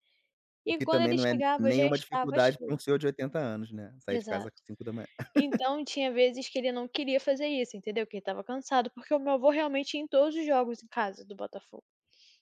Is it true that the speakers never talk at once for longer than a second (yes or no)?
no